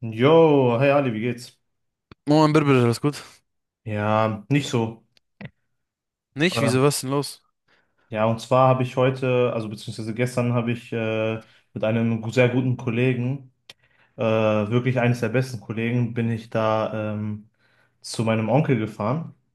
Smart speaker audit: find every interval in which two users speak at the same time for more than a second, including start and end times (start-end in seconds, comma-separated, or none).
none